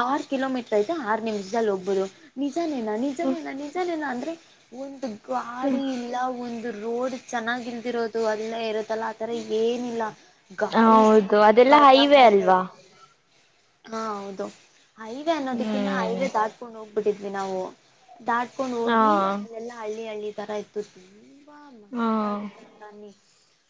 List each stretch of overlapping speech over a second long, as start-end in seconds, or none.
10.8-12.6